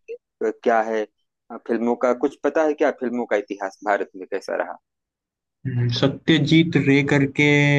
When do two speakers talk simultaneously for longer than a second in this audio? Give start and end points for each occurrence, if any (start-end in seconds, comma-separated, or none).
none